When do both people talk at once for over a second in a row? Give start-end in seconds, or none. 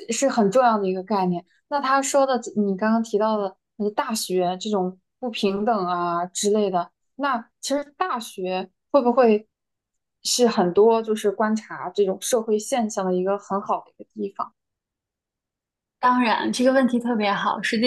none